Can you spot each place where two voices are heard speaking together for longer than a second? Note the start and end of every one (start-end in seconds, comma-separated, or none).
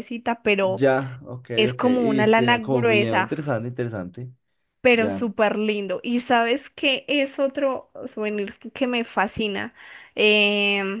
1.6-3.3